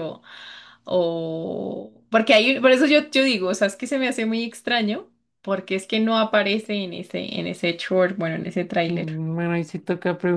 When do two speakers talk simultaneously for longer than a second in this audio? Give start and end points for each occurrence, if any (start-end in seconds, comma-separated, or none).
none